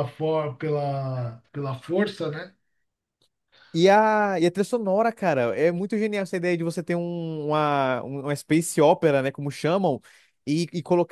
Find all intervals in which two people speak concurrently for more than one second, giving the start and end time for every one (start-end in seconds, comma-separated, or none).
none